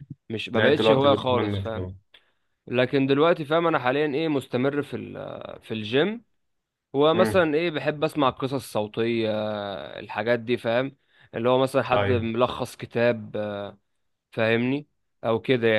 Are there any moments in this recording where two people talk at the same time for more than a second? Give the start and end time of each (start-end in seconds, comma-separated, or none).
0.5-1.9